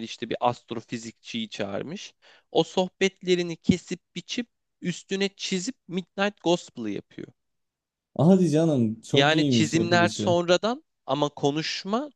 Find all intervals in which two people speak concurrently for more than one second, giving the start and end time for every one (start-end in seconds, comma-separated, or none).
9.1-10.4